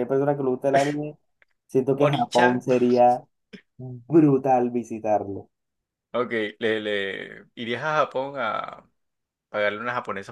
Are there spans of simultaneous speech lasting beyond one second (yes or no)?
no